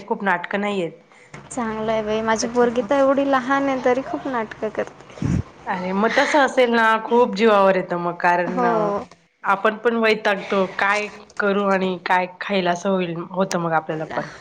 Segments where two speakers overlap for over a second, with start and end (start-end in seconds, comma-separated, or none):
none